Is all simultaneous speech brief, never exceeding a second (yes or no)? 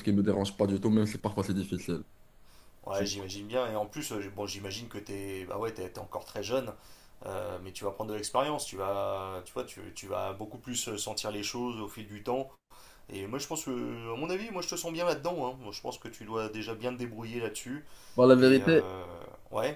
yes